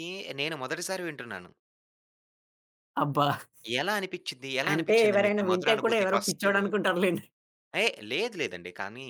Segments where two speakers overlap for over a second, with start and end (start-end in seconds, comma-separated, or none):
4.7-6.5